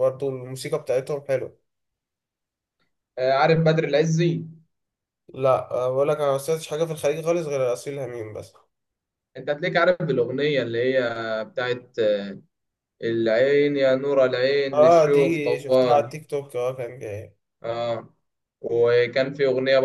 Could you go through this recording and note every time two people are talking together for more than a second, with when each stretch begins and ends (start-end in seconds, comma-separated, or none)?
14.7-16.1